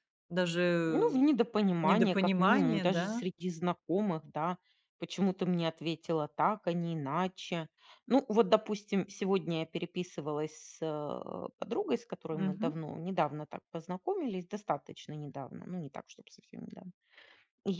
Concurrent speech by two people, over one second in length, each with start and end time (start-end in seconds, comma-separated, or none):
1.8-3.2